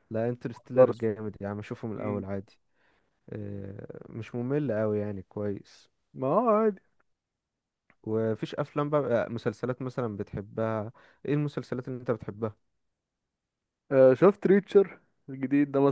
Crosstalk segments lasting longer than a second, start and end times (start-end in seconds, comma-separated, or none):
none